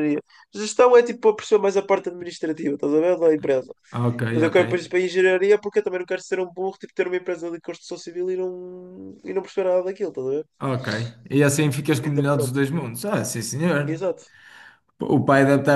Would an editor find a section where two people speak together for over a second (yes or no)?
no